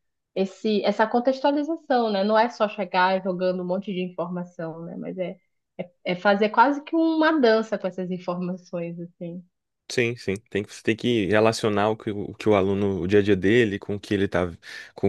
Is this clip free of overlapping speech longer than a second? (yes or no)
yes